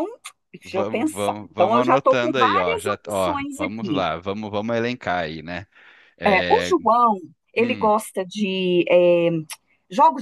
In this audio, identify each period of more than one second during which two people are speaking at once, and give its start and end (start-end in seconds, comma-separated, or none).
0.7-4.0